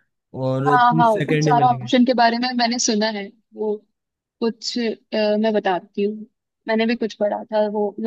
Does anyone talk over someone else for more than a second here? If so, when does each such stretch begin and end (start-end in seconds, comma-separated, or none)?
0.7-1.9